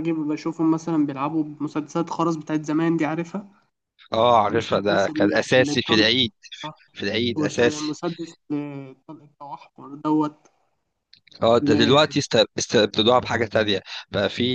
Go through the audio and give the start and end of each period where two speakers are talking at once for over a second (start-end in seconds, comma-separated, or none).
4.5-6.1